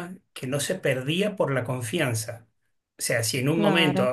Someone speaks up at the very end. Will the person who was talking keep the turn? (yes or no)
yes